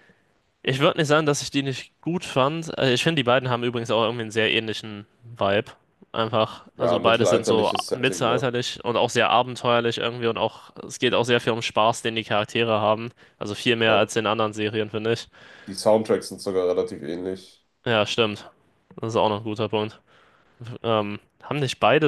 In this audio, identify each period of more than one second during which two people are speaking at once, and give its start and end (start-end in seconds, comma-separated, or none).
6.8-8.5